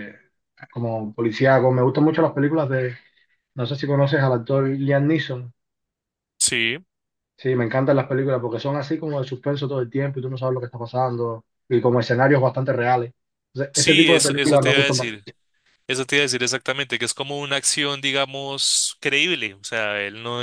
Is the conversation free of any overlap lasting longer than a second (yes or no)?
no